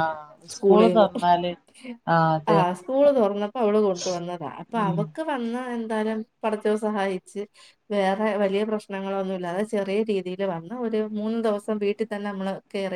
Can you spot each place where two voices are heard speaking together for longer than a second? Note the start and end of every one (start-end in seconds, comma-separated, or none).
none